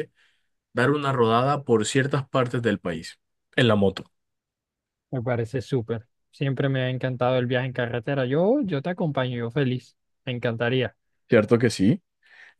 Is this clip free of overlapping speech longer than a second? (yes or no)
yes